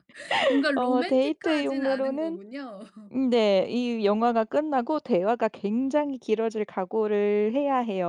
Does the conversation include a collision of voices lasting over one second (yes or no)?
yes